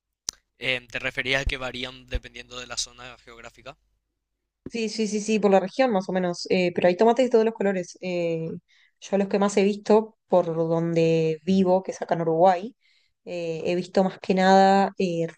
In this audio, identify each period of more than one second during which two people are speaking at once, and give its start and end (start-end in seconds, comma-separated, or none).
none